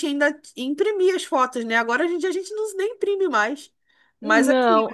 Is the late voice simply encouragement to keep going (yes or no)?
yes